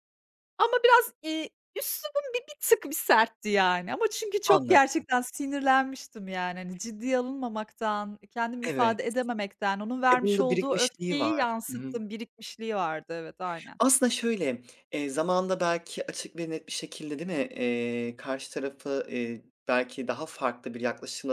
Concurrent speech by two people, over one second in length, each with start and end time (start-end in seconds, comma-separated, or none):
10.1-12.0